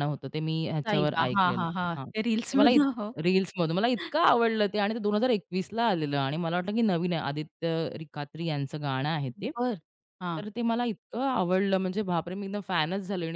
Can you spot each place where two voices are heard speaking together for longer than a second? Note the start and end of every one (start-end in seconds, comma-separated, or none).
0.9-2.8